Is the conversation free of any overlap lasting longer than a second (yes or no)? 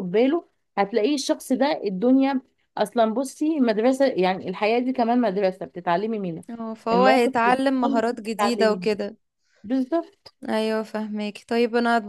no